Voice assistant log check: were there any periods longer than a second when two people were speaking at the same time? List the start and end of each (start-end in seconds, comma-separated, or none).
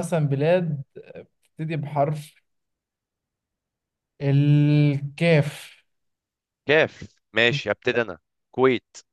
none